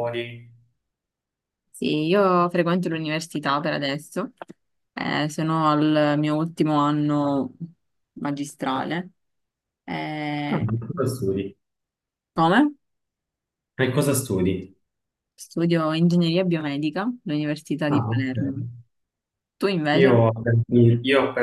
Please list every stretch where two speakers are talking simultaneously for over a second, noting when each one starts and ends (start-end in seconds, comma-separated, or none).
none